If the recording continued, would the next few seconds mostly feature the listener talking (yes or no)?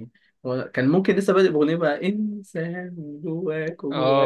yes